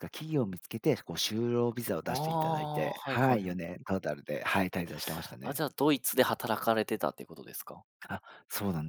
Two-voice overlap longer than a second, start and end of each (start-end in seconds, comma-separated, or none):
2.1-3.6